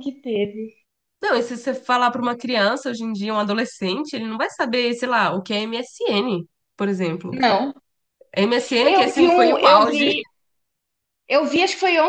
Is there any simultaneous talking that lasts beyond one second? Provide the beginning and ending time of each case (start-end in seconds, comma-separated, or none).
8.8-10.1